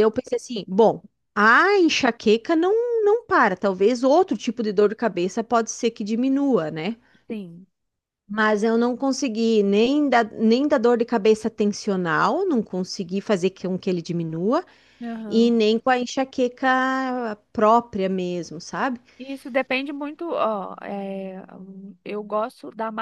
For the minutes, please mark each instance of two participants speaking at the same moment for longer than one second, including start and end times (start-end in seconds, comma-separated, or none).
none